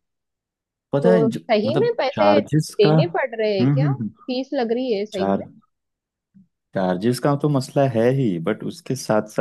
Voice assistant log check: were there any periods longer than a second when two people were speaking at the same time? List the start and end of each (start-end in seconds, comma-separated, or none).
1.0-4.1